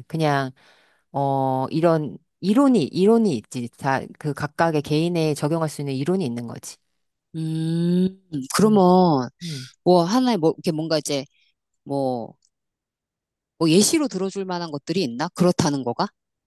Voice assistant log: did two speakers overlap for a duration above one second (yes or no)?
no